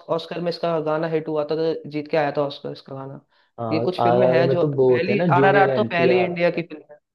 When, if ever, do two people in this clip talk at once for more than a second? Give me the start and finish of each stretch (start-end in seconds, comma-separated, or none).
3.7-6.3